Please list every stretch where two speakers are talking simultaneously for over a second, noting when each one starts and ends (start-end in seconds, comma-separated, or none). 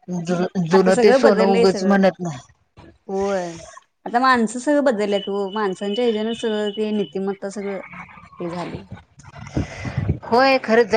0.7-2.0